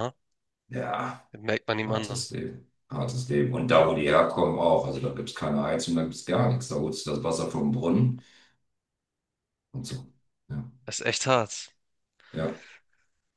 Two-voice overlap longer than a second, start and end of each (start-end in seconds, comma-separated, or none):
none